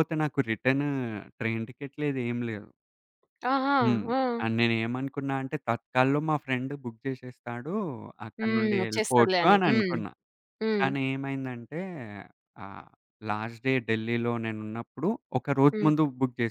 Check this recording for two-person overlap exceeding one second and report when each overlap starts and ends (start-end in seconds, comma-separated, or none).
8.4-9.9